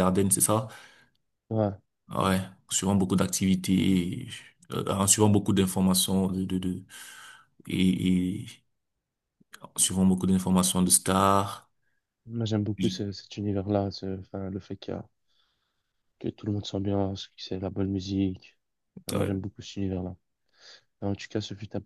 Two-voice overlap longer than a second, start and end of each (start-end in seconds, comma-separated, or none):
none